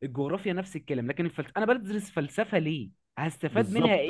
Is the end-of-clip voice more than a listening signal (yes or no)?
yes